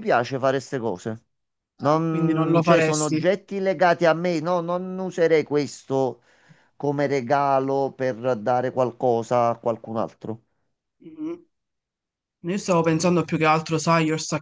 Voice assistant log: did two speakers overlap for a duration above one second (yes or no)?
yes